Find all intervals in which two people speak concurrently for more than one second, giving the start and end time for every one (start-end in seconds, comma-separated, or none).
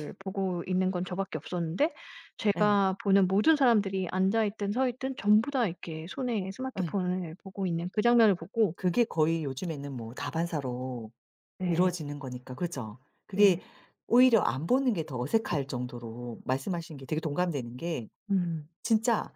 none